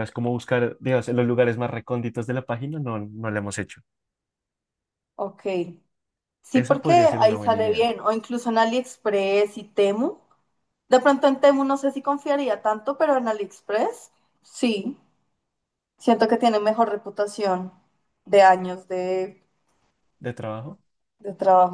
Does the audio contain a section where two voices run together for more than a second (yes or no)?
yes